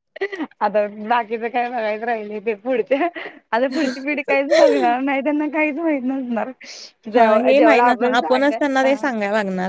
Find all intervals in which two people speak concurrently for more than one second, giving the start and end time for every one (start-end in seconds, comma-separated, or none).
7.2-9.0